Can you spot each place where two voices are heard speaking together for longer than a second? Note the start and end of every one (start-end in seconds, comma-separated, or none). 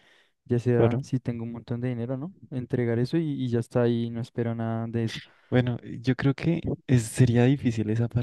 none